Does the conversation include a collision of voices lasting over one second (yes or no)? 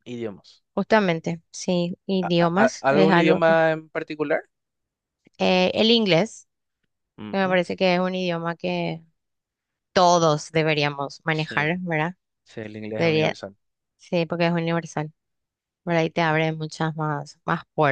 yes